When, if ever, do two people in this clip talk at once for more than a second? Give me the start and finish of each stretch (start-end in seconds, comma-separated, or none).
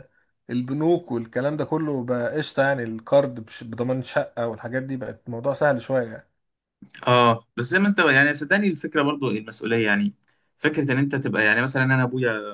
none